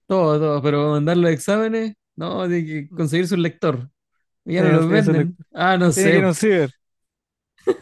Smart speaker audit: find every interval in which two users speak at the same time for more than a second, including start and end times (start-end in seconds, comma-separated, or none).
4.5-6.2